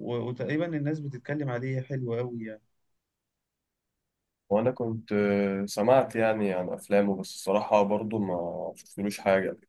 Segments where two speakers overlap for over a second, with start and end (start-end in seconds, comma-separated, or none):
none